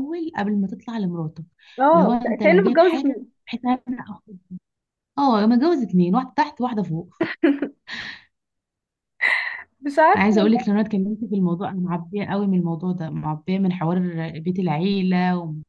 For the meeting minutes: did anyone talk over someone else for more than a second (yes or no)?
yes